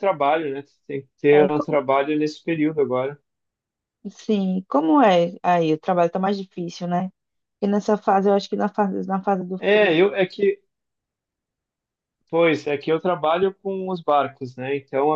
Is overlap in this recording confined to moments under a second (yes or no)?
yes